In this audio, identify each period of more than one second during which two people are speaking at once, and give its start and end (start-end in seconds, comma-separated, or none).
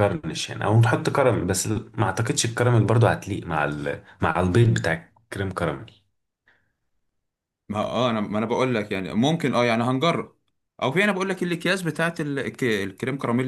none